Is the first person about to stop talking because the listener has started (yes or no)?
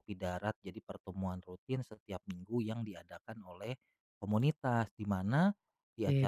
no